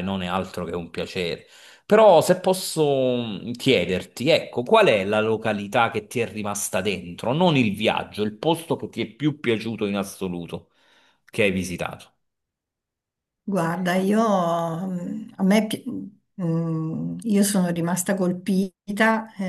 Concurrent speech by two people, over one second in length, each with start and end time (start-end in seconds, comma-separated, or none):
none